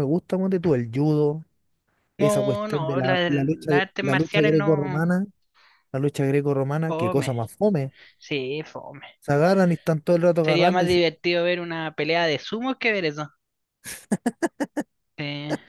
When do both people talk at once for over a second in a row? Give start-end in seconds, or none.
2.2-5.1